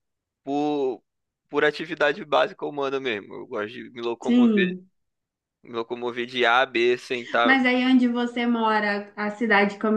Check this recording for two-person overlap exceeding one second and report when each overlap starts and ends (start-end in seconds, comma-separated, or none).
none